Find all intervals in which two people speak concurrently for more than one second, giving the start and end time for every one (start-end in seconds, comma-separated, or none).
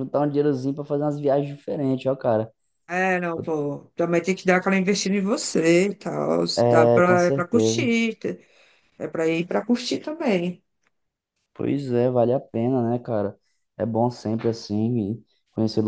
6.5-7.9